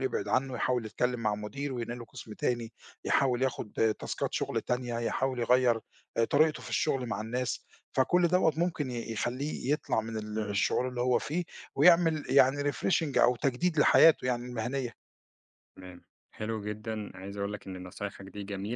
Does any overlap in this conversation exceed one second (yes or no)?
no